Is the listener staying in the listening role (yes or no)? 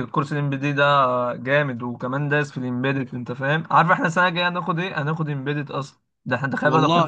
yes